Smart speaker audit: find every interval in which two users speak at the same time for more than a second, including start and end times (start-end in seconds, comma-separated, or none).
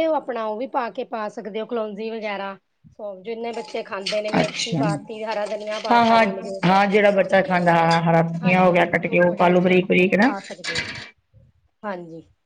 8.4-10.3